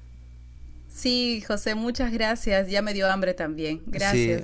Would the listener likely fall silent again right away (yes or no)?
no